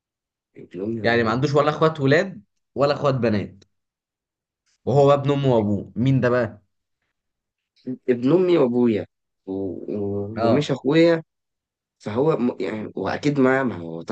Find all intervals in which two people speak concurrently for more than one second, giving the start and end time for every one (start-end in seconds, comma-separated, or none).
none